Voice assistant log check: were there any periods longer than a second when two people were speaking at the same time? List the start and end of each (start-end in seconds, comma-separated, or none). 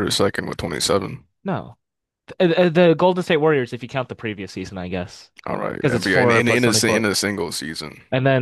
5.8-7.0